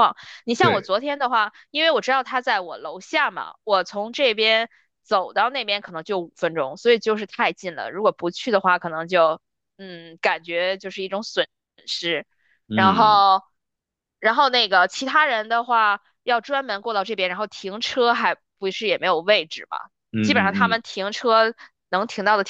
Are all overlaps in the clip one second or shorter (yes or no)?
yes